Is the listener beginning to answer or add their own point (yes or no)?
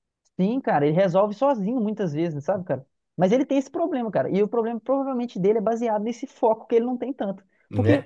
no